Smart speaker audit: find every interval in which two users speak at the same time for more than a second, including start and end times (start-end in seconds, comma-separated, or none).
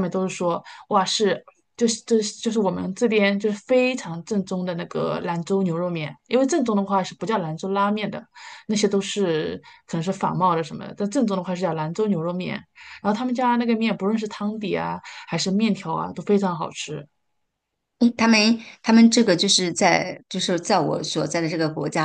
none